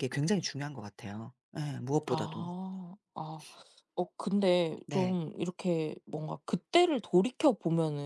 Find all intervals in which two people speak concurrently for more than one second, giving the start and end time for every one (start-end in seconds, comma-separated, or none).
none